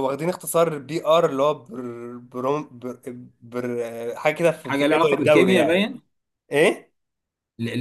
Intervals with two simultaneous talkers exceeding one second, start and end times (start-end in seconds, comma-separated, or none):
4.6-5.9